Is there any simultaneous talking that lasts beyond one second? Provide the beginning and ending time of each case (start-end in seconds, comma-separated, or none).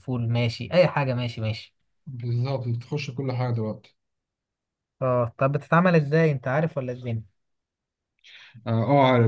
none